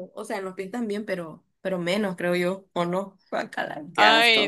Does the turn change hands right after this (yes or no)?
yes